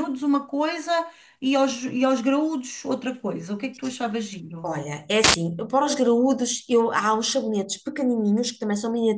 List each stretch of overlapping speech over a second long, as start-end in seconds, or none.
none